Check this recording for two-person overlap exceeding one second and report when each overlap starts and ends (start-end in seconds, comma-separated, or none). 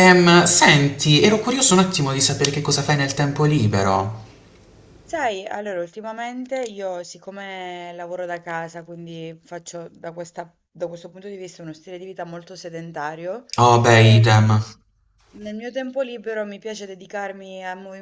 none